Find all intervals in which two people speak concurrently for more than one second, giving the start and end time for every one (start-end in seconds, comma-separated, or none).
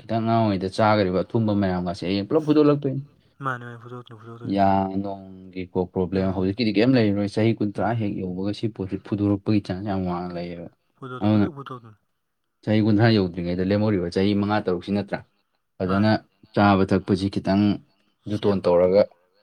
none